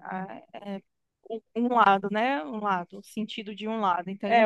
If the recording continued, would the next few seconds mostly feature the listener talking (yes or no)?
yes